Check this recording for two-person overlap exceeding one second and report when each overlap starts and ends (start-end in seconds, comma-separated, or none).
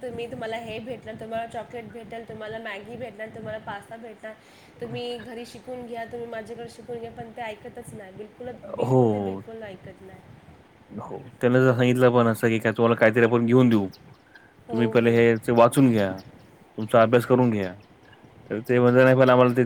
none